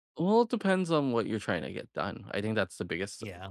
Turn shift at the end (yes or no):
no